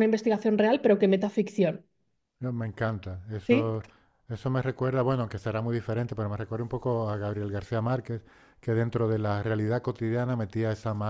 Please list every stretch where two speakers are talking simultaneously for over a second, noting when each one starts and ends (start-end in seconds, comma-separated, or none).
none